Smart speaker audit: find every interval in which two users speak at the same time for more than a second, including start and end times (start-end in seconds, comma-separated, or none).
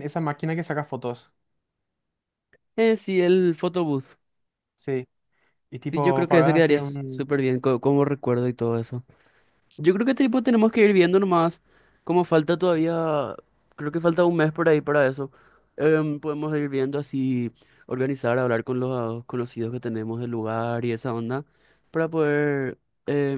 5.9-7.2